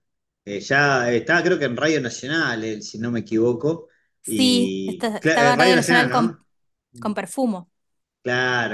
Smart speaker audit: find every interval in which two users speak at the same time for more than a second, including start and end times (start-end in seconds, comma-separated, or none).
4.3-6.4